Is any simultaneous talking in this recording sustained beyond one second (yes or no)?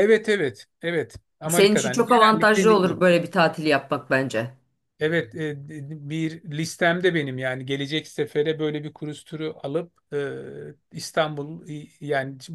yes